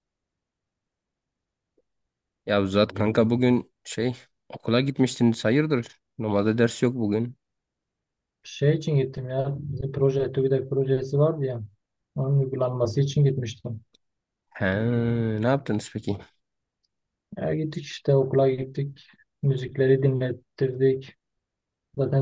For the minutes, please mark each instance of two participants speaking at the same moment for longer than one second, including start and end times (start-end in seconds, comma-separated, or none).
none